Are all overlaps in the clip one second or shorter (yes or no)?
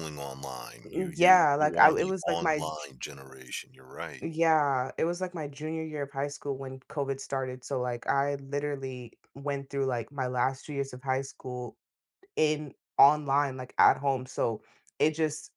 no